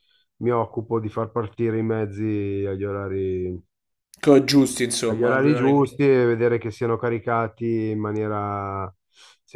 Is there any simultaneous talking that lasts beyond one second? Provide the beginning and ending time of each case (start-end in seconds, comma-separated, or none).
6.1-7.7